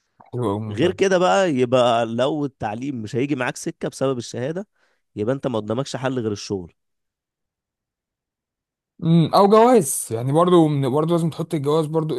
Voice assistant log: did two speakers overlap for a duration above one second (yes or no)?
no